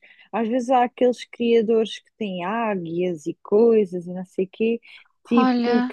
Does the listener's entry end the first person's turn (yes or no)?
no